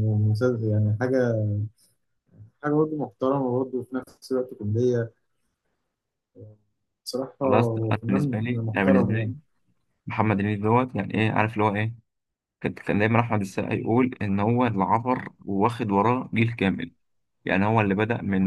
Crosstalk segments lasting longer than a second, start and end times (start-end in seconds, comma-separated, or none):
7.4-9.3